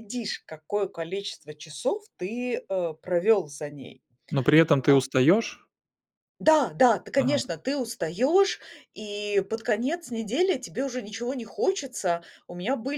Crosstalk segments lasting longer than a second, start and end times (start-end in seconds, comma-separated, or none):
none